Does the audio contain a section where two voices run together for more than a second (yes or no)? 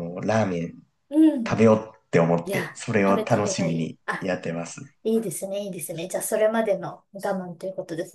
yes